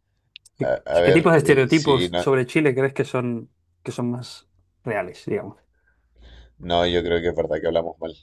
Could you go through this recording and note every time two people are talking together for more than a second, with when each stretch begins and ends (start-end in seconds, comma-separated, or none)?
0.6-2.3